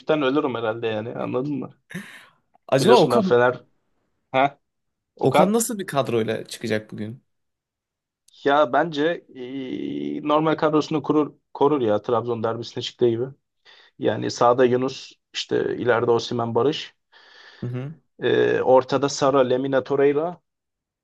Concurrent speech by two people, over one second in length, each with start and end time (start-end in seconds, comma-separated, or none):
none